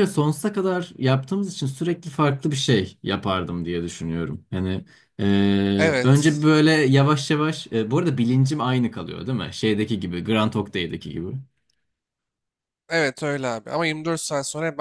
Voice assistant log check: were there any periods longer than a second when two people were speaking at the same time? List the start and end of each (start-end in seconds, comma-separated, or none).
none